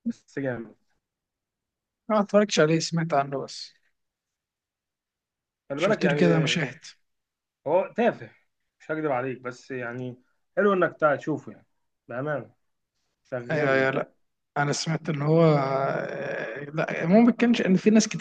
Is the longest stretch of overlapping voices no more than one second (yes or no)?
yes